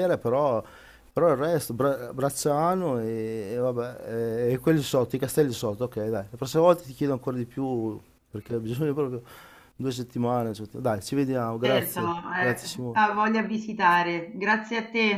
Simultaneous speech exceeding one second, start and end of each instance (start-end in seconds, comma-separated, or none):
11.6-13.2